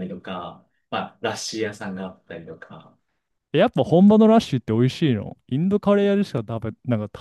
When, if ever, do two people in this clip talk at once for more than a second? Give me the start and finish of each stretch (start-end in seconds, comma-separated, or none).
none